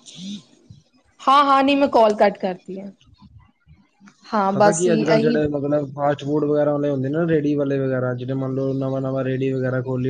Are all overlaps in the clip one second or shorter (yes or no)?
yes